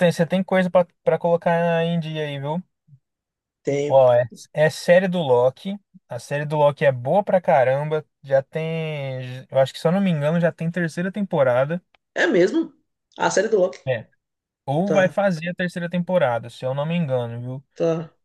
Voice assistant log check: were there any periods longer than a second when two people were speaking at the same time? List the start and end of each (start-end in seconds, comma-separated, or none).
none